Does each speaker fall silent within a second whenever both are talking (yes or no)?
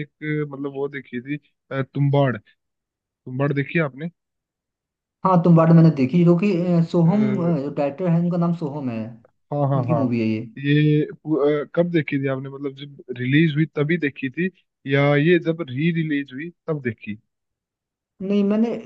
yes